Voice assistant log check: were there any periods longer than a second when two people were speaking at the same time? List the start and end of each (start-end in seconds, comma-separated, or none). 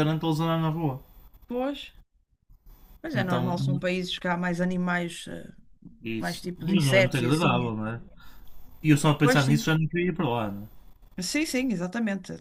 6.2-7.7